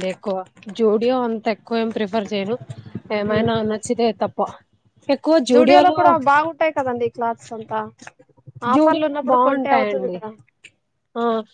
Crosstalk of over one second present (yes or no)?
yes